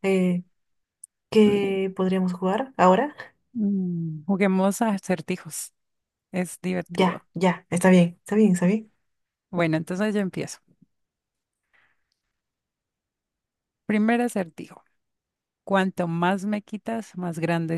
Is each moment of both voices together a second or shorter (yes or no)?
yes